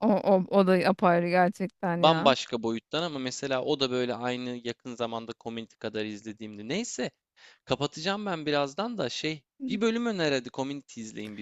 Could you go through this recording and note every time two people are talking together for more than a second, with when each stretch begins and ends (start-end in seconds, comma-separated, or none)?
none